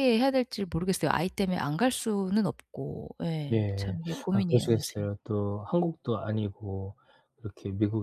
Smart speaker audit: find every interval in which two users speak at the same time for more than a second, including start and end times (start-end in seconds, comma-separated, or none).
3.5-5.1